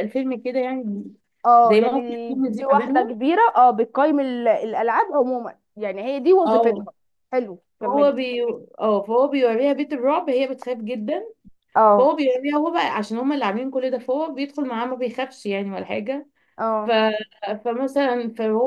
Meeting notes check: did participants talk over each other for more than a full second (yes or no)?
yes